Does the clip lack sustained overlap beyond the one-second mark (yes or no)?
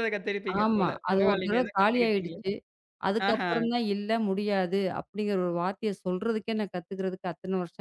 no